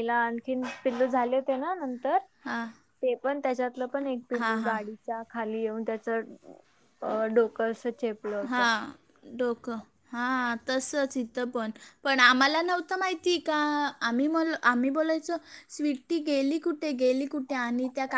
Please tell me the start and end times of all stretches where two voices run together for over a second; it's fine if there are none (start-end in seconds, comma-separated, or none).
none